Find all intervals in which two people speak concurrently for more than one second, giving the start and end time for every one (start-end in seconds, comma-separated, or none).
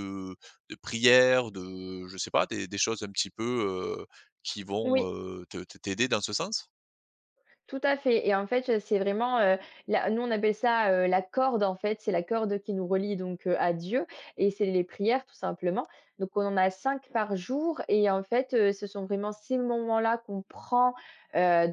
none